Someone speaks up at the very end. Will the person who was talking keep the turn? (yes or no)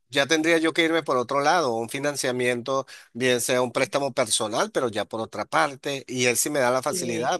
yes